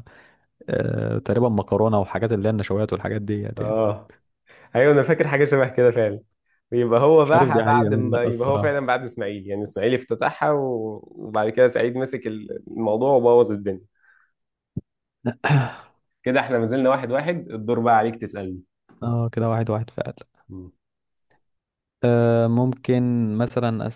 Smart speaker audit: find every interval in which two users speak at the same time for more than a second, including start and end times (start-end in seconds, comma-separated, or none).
7.2-8.9